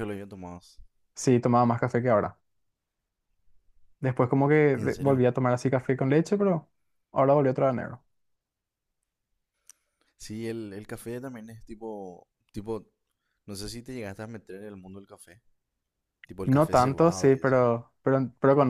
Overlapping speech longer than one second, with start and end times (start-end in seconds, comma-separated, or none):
16.4-17.7